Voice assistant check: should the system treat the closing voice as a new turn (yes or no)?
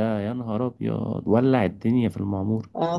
yes